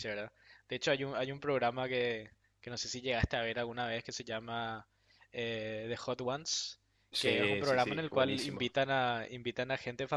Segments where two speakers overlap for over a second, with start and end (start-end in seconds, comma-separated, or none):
7.2-8.7